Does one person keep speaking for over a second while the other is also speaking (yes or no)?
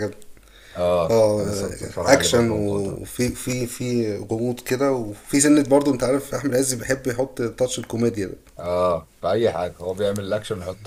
yes